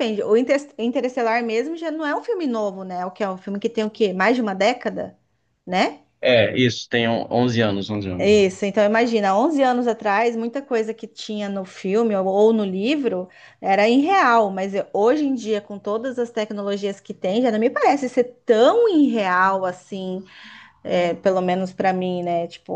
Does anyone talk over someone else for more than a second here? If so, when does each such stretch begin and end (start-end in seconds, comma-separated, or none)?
none